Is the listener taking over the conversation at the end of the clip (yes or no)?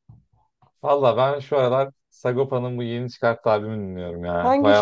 yes